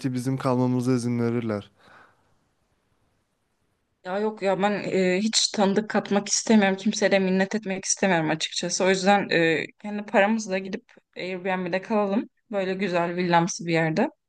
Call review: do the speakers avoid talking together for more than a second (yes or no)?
yes